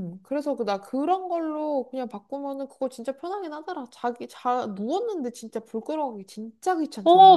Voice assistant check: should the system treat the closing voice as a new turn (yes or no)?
yes